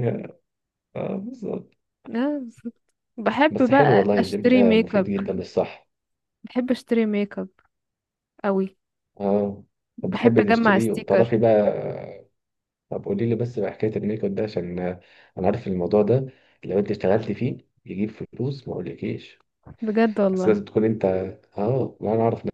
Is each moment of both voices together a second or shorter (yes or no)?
no